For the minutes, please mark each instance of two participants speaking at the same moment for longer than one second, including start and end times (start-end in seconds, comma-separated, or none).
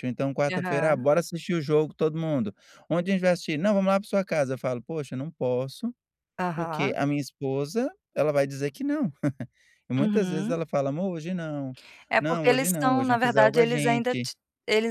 12.2-14.3